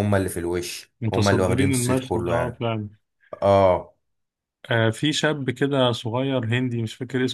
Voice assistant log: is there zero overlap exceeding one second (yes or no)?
no